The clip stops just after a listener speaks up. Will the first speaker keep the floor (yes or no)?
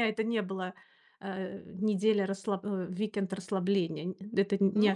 no